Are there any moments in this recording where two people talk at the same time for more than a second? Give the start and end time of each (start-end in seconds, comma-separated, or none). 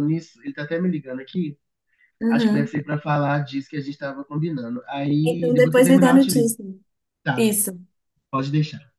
5.2-6.5